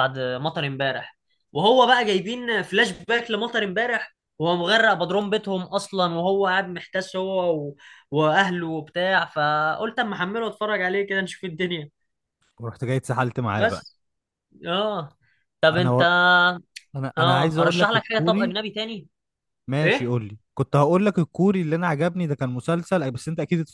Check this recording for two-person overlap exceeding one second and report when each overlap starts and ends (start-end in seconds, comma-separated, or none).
17.2-18.6